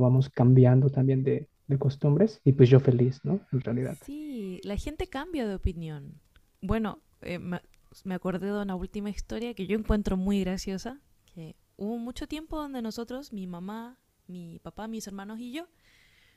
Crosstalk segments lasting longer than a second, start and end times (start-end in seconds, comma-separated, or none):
none